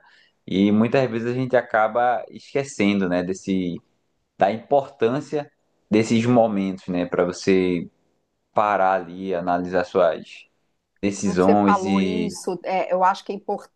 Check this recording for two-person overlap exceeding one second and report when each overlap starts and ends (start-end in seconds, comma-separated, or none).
11.1-12.3